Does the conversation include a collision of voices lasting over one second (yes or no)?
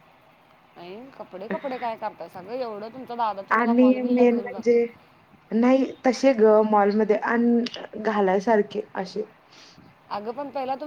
yes